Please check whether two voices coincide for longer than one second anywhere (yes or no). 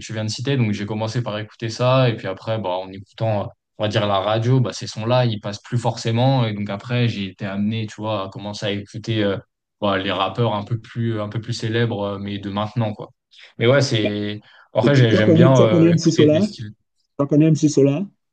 yes